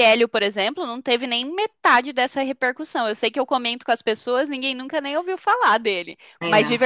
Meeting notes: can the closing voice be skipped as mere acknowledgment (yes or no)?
yes